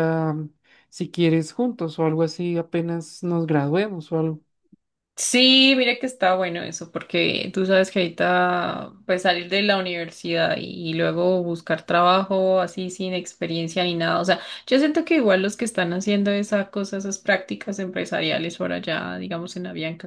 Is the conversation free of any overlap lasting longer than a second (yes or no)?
yes